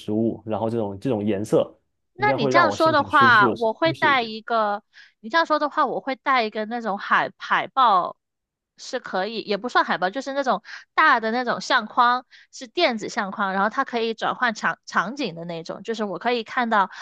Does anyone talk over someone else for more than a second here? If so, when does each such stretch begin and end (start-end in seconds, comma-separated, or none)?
2.2-4.3